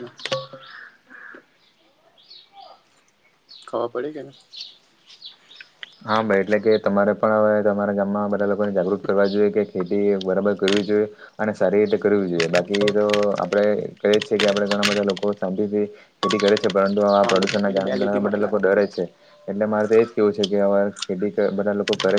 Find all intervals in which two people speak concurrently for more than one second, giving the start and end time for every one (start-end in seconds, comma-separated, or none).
17.1-18.5